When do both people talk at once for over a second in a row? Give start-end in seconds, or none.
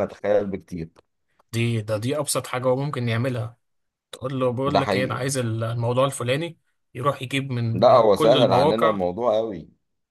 7.7-9.0